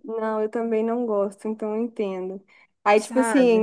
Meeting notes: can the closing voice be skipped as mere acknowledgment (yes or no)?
yes